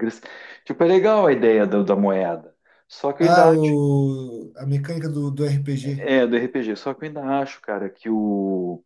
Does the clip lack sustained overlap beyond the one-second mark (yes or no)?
yes